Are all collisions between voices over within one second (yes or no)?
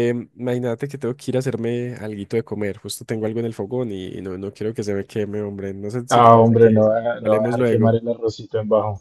no